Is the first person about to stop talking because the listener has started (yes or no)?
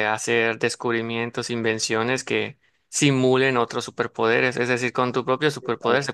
no